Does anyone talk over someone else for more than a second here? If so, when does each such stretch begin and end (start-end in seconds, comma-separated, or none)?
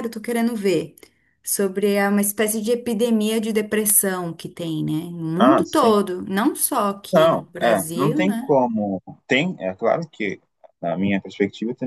7.1-8.6